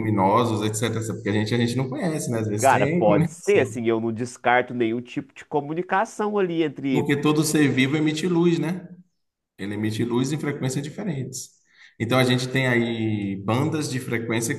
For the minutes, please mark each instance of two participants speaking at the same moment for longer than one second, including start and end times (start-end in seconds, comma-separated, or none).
2.6-3.8